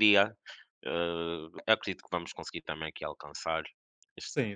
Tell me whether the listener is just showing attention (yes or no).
no